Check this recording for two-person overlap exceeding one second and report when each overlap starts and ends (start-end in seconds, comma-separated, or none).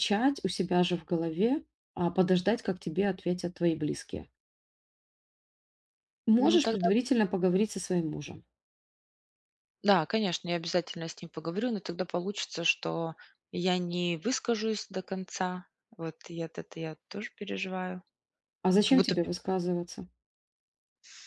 none